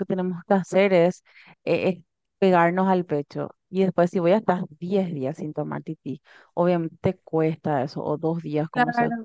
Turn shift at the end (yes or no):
no